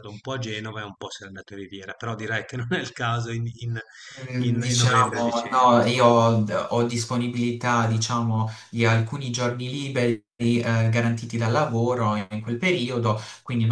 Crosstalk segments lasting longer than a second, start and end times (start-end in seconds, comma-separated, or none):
4.4-5.8